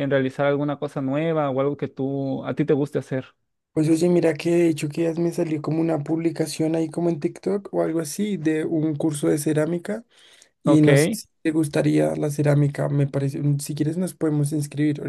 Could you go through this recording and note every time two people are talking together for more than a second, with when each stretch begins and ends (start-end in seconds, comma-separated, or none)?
none